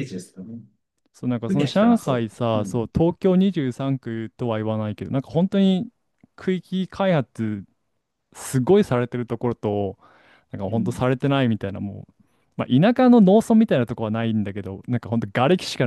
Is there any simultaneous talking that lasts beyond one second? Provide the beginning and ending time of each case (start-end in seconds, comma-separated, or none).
1.5-2.9